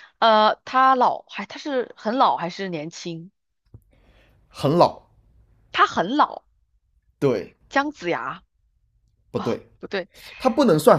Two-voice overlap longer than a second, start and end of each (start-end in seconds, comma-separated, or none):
none